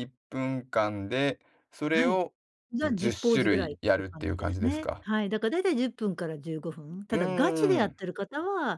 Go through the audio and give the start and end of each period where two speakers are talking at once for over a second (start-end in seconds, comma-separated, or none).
2.8-5.0